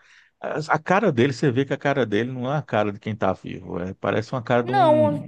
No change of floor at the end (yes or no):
no